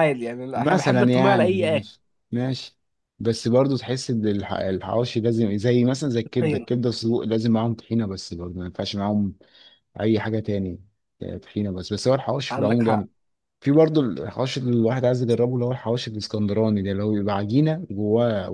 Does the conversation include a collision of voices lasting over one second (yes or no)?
yes